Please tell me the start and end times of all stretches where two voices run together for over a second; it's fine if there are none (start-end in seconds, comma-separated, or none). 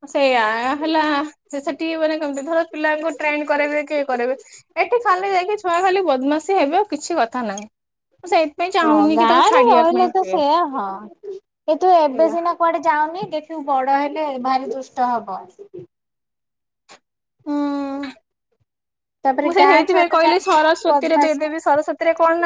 19.4-21.4